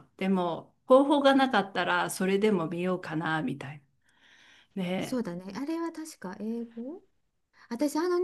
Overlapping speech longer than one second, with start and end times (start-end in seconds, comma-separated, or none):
none